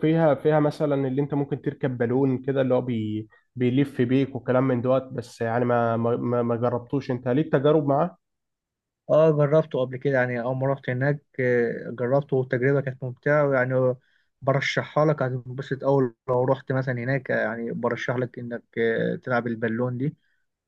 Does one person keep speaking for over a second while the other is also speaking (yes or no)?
no